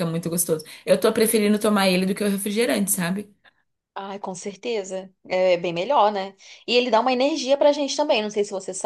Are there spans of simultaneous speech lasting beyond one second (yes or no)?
no